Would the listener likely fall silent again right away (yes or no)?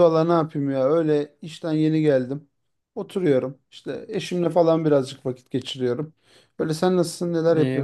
no